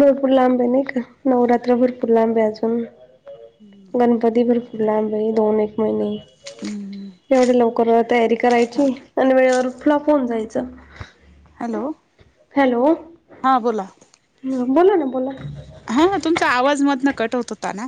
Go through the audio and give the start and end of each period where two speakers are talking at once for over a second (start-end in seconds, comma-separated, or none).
none